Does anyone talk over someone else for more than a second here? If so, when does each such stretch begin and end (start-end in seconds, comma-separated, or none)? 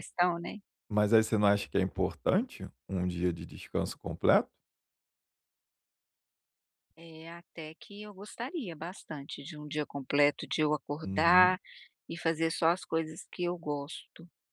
none